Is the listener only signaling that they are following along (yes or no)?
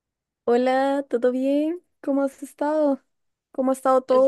no